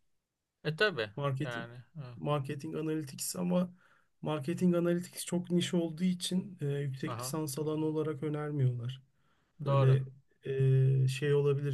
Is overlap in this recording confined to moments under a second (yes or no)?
yes